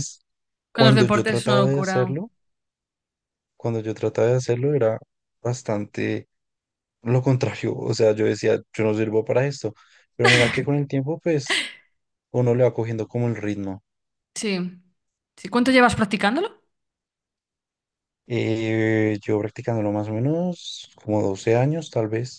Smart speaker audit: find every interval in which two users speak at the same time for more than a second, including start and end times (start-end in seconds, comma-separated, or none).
0.7-2.2